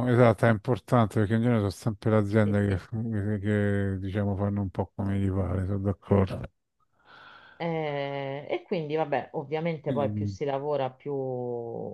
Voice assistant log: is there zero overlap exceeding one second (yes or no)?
yes